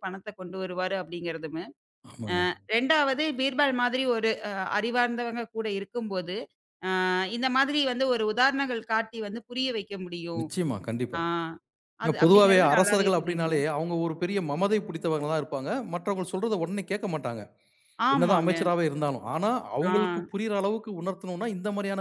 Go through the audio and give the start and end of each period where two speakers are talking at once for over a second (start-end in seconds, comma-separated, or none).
12.1-13.6